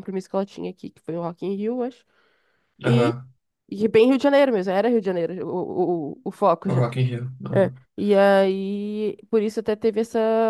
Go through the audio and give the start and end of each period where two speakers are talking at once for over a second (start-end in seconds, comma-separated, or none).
none